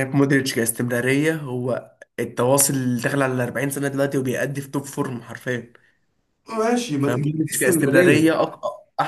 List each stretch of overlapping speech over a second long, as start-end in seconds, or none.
7.0-8.3